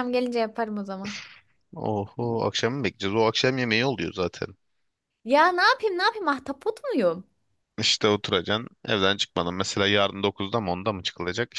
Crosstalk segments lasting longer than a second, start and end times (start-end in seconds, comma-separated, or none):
none